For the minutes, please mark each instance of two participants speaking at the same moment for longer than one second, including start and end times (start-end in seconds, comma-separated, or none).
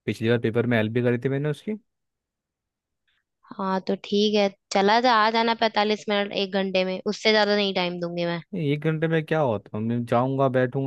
none